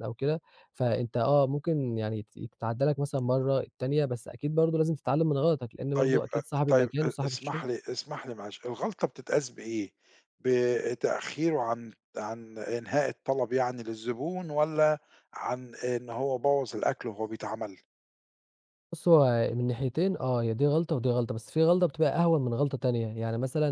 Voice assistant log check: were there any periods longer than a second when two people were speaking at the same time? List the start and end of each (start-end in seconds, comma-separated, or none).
5.9-7.6